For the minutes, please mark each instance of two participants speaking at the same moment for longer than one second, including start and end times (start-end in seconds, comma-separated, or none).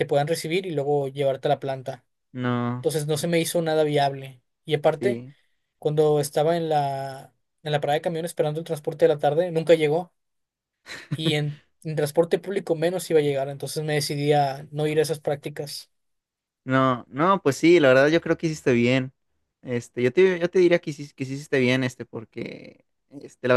none